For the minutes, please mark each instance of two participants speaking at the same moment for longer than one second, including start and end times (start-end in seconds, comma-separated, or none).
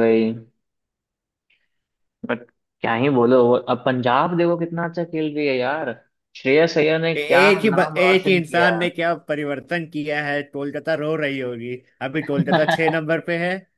7.2-8.7